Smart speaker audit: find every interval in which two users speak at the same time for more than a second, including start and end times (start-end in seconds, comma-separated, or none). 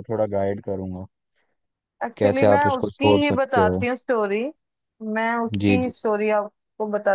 2.2-3.8